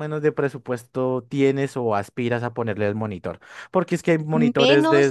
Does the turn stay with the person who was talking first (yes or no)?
no